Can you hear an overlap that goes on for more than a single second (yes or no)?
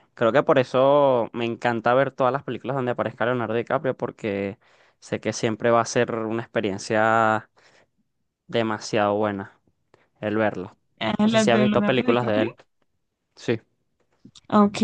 yes